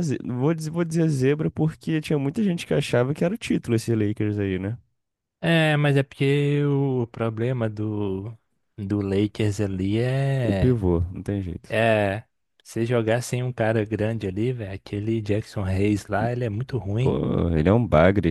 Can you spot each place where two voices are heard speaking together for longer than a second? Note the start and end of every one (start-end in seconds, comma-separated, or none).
none